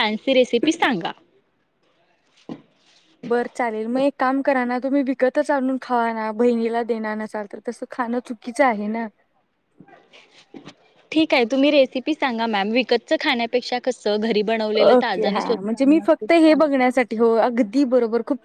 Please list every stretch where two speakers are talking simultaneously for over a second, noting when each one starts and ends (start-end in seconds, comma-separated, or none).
14.8-16.8